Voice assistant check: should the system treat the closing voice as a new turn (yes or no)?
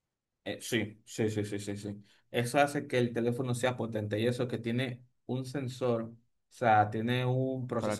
no